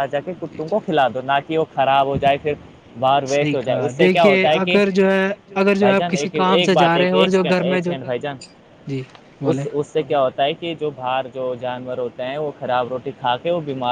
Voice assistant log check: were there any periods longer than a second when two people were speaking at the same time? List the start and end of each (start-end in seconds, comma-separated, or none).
3.4-4.8, 5.8-7.9